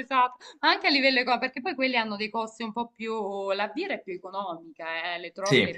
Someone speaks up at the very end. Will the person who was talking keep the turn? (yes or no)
yes